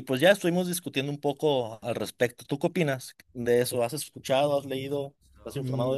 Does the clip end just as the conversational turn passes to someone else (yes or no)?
yes